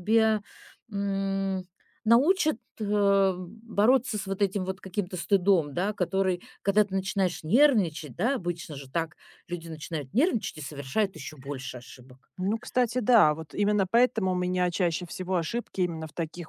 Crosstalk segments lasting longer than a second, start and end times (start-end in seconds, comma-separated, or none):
none